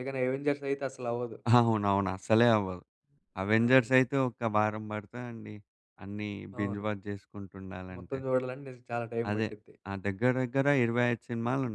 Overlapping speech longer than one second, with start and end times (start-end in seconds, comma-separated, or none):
none